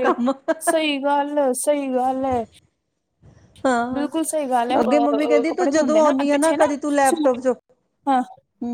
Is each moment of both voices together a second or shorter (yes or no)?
no